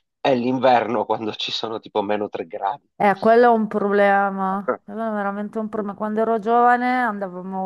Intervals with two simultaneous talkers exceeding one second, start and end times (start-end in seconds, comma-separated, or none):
none